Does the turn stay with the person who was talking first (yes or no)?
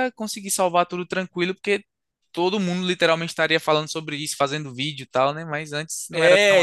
no